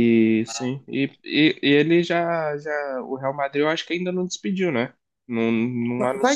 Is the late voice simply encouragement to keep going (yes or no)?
no